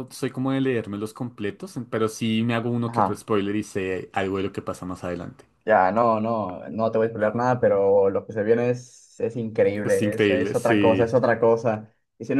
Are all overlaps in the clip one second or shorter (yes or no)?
no